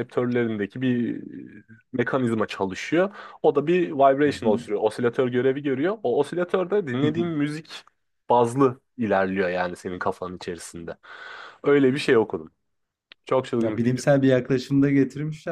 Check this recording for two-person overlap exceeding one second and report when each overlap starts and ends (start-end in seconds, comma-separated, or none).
none